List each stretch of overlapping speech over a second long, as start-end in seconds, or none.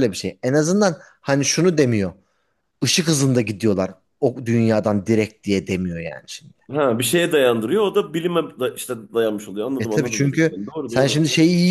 9.8-11.2